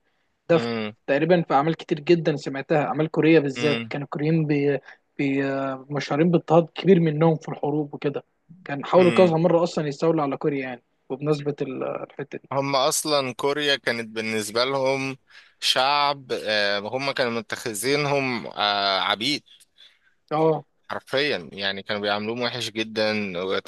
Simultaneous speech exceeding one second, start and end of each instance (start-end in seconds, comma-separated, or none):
none